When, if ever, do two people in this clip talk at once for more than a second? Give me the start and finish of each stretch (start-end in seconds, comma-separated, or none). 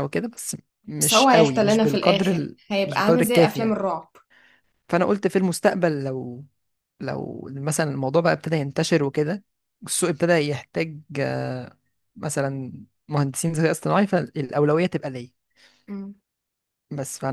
1.0-3.8